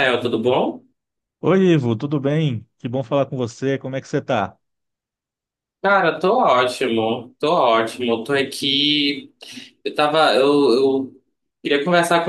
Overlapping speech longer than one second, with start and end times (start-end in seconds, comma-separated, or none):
none